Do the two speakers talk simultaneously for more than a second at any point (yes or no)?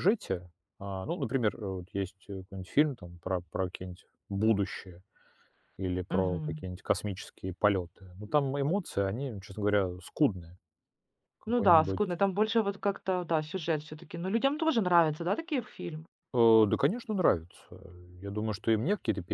no